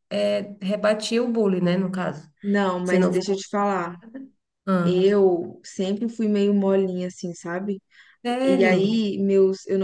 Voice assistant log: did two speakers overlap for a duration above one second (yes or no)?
no